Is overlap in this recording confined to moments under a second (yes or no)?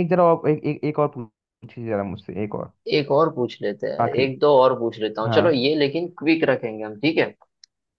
yes